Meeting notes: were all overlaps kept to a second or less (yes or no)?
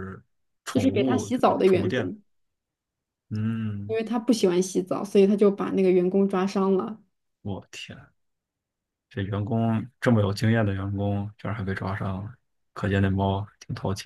no